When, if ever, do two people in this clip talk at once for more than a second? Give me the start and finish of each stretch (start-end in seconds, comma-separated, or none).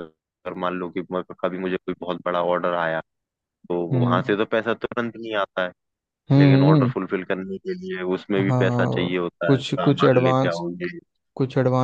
8.5-10.6